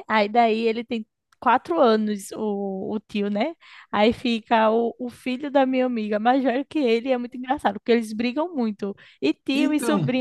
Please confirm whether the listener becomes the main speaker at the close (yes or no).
no